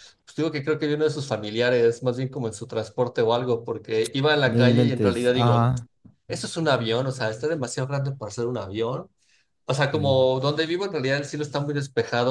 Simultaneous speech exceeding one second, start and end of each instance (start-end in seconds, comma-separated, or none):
4.4-5.7